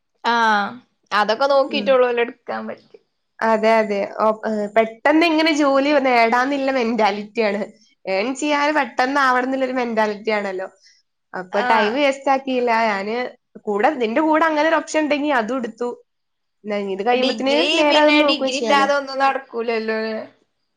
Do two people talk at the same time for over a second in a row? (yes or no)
no